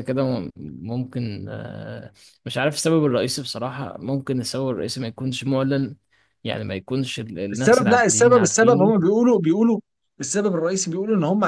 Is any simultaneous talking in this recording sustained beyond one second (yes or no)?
yes